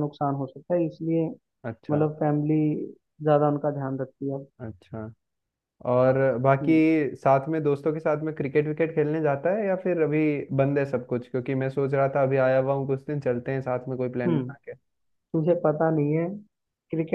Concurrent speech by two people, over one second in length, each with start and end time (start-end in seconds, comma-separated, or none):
none